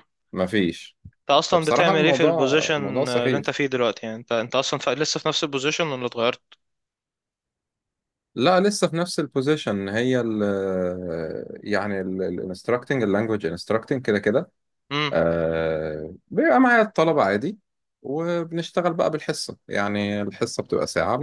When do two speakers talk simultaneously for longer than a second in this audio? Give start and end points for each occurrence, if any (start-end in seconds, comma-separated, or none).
1.5-3.5